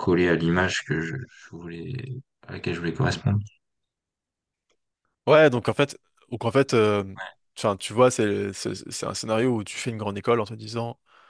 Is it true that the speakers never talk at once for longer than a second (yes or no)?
yes